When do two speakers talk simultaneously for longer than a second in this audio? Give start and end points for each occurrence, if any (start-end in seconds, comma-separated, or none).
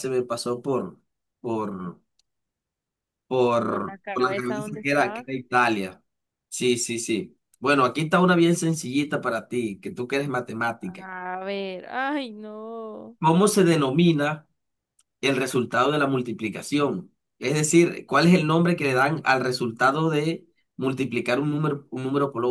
3.7-5.3